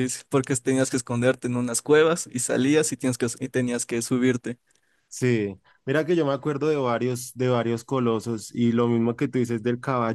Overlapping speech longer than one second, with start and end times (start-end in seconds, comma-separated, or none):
none